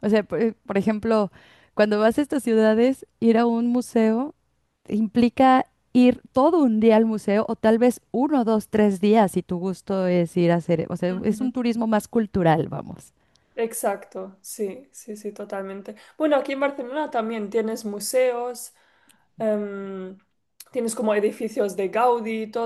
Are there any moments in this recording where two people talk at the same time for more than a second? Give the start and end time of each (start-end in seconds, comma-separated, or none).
none